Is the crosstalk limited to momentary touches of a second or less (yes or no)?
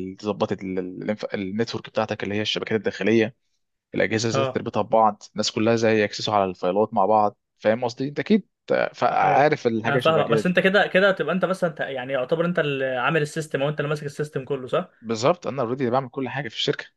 no